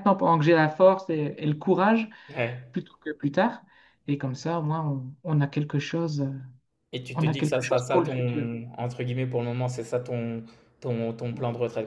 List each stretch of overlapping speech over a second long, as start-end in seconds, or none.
7.2-8.5